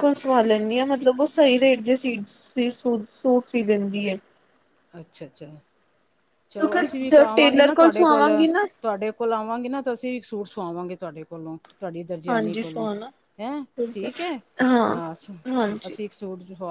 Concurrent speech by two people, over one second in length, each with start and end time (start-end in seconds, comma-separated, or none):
6.5-8.3